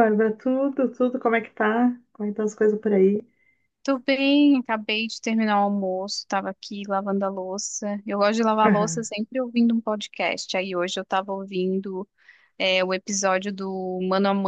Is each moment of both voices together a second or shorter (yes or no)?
yes